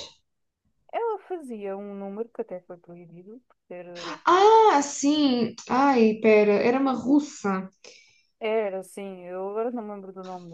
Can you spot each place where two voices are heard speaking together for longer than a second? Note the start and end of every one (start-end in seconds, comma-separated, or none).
none